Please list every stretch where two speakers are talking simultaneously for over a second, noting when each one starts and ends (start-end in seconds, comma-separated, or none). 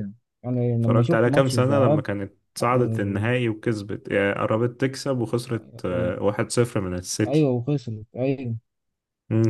0.8-2.0